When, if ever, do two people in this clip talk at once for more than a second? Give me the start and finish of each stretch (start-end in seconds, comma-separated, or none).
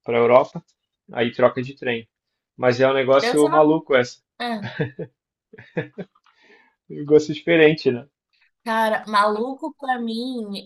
none